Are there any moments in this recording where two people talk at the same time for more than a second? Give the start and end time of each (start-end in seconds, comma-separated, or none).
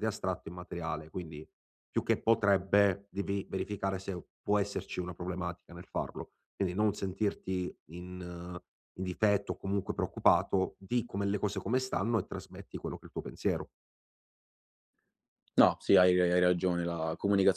none